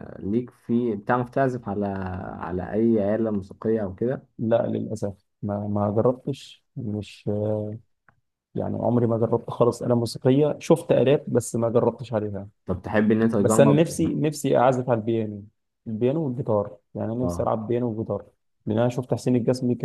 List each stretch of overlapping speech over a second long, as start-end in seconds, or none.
none